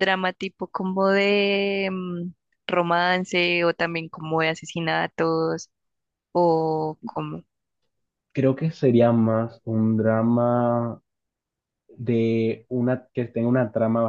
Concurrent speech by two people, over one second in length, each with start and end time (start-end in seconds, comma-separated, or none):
none